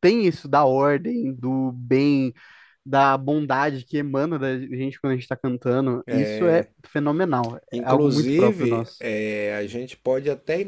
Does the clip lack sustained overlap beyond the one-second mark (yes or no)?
no